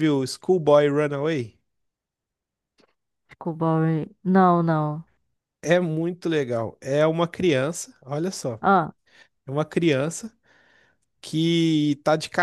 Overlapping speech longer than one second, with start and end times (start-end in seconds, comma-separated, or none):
none